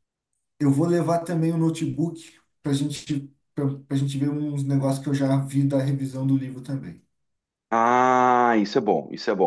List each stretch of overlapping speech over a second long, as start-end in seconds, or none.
none